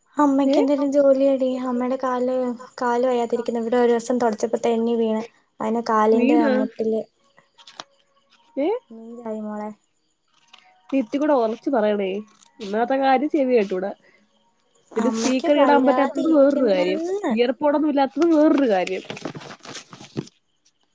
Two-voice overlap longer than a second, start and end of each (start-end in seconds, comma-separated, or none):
15.1-17.3